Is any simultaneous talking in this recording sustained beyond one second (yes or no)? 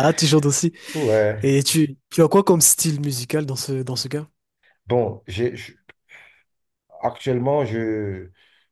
no